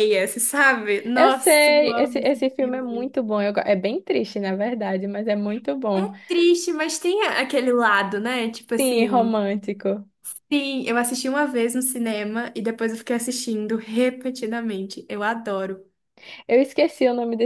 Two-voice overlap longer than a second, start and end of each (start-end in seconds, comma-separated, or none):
1.1-3.1